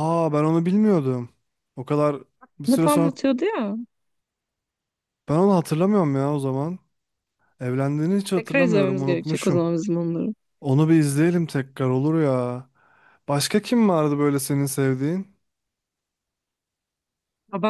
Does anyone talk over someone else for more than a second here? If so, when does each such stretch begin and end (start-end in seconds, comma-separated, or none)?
8.3-9.7